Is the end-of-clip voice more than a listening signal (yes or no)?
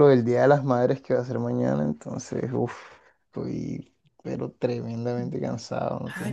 yes